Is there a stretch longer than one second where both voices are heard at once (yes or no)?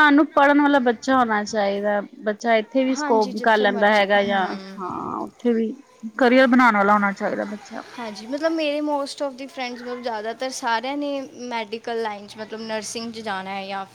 yes